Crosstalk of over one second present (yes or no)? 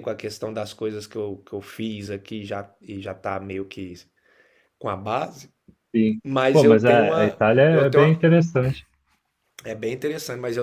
yes